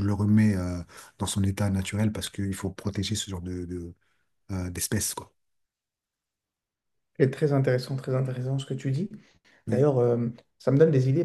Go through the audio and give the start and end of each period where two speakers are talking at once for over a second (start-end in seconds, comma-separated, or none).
none